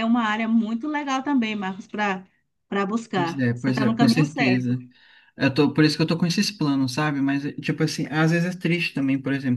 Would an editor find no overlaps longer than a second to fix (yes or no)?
no